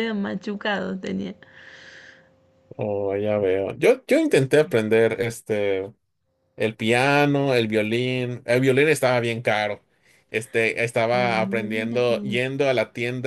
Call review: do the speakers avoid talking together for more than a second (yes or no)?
no